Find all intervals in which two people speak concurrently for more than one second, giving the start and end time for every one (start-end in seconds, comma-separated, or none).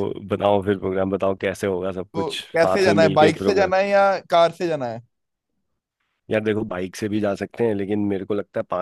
2.1-3.7